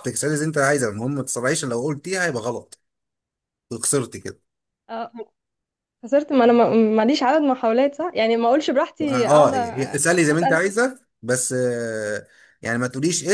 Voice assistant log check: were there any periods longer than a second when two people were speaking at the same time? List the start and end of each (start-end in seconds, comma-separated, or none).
9.0-10.6